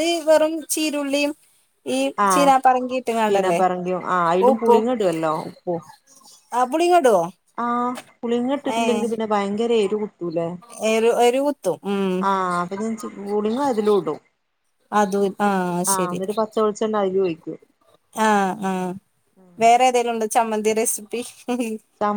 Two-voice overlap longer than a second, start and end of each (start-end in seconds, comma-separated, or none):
none